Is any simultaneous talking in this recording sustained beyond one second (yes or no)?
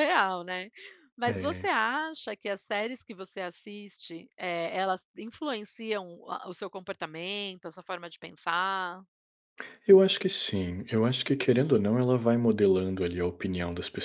no